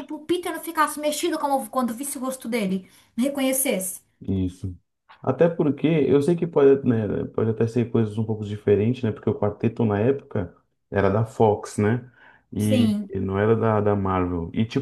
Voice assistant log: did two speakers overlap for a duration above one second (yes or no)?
no